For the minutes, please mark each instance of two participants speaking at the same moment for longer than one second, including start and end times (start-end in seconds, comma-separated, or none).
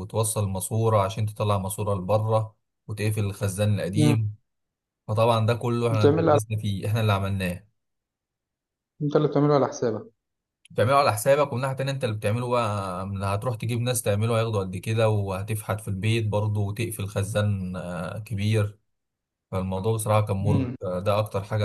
none